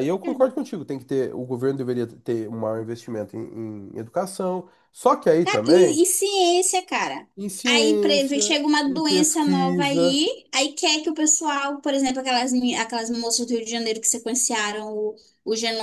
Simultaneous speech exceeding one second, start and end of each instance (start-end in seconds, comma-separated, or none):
7.7-10.2